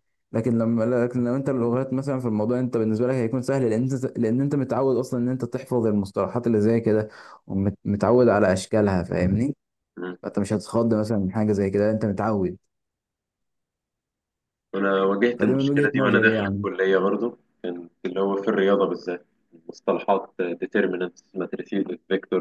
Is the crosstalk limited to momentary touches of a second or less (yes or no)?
no